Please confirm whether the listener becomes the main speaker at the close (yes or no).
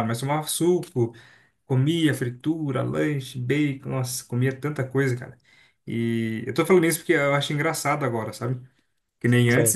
no